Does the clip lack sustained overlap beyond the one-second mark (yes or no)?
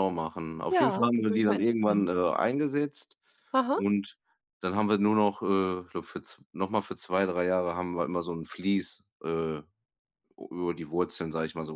no